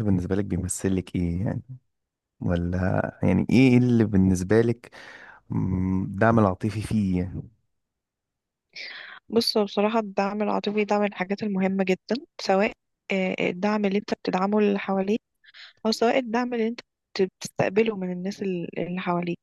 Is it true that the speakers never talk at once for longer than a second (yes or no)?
yes